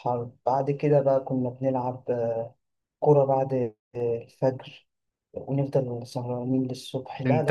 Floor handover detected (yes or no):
yes